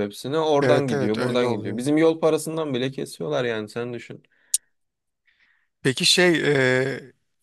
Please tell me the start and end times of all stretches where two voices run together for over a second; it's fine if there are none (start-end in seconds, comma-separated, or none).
0.6-1.9